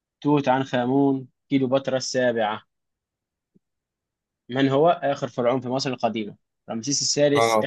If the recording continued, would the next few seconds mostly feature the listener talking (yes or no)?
no